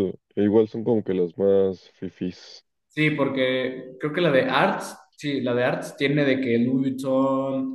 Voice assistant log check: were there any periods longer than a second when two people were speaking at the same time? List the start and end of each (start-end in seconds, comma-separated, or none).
none